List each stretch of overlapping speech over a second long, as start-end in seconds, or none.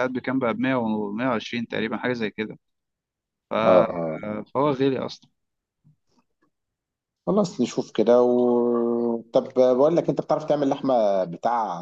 none